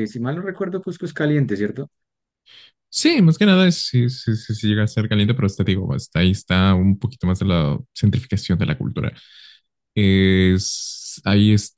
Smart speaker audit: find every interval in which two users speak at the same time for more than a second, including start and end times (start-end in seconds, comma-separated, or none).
none